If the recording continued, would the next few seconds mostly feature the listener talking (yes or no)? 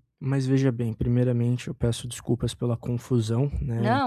no